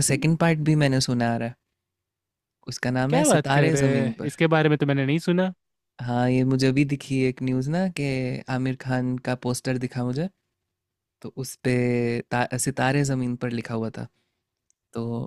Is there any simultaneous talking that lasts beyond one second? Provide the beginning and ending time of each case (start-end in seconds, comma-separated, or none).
3.1-4.4